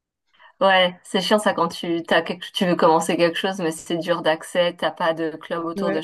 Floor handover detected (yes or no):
yes